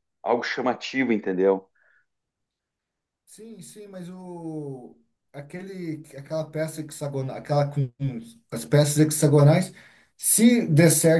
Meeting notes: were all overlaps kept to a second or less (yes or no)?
yes